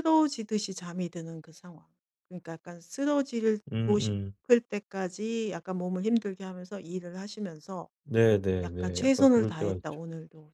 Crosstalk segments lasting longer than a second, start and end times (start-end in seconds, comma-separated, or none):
8.6-10.0